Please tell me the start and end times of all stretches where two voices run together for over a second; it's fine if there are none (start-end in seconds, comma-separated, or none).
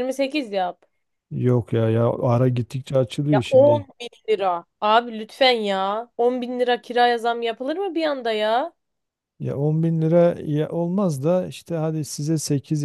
none